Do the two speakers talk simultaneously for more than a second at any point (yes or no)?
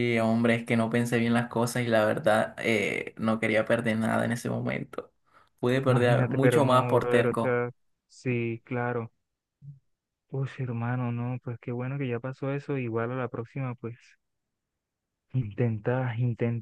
yes